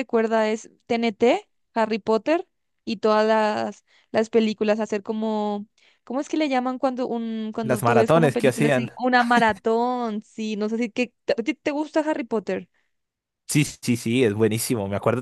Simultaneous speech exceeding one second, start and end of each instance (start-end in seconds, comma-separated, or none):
7.6-8.9